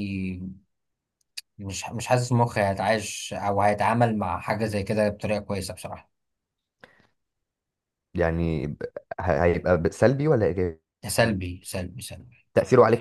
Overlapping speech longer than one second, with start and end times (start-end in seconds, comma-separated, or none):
none